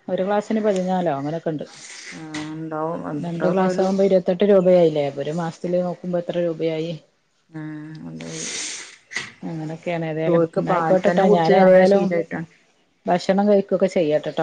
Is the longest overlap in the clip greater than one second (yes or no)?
yes